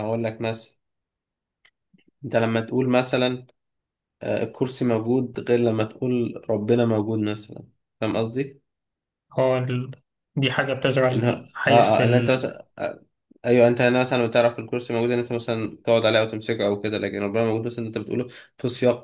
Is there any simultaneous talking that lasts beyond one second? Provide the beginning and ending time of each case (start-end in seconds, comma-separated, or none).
11.1-12.5